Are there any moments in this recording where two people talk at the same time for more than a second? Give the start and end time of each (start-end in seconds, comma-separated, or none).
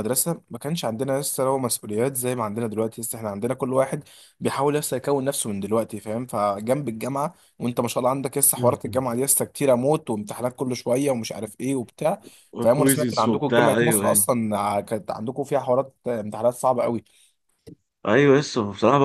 12.6-14.2